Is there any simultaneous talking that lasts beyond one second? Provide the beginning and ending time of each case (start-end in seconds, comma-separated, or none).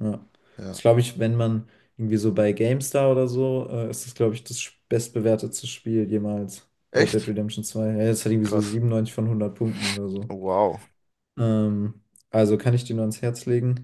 none